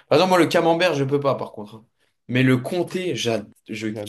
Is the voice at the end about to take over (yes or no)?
yes